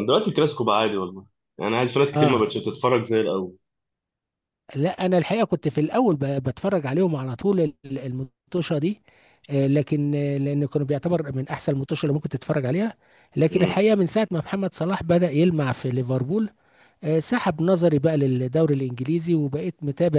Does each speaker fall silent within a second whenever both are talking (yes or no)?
yes